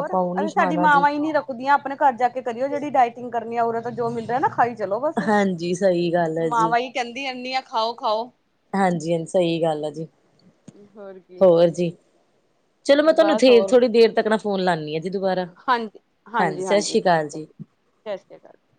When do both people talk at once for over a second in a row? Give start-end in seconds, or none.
none